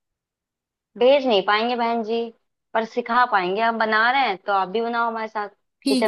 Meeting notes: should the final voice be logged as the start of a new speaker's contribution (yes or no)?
yes